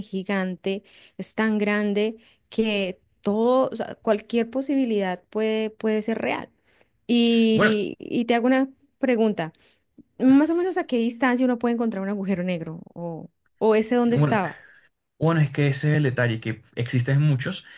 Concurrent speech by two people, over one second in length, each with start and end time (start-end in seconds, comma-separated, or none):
none